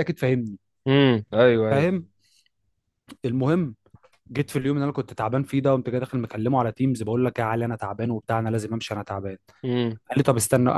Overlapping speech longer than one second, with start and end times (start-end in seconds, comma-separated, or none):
none